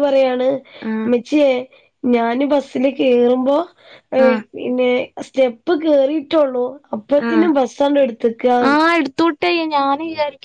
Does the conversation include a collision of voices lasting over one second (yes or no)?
no